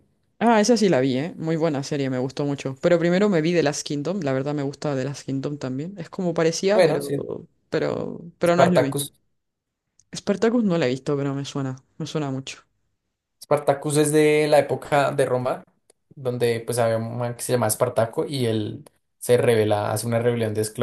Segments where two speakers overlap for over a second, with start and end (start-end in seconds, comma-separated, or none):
none